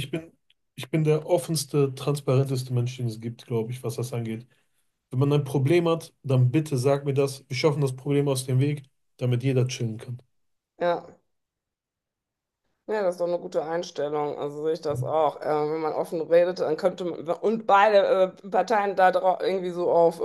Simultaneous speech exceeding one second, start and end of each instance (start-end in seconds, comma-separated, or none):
none